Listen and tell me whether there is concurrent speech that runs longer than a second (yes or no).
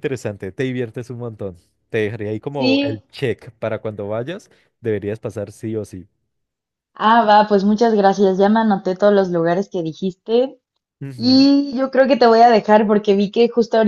no